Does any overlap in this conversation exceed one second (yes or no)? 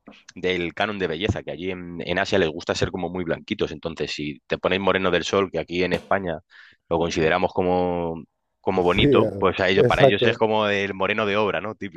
yes